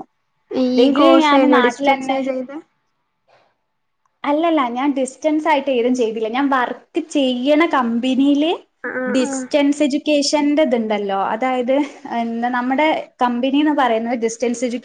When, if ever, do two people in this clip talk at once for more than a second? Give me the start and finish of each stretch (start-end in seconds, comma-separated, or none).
none